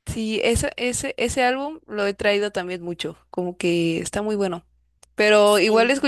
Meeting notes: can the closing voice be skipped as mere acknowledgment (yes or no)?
yes